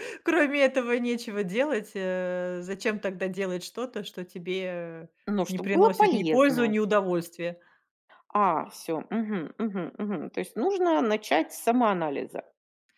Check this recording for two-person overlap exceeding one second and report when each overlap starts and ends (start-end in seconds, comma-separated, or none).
5.5-6.7